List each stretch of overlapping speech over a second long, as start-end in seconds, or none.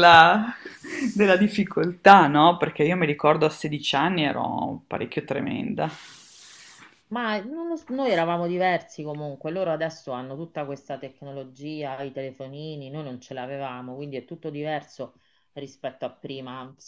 none